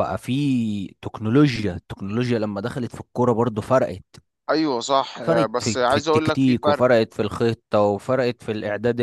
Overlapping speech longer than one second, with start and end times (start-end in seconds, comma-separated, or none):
5.2-6.9